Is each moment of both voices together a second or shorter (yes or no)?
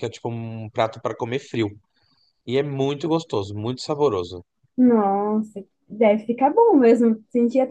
yes